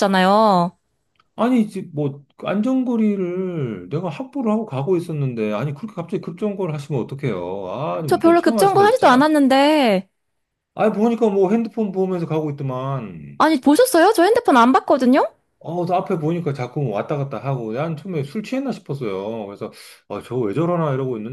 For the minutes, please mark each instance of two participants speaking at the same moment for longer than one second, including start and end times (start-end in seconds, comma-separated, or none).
8.1-9.3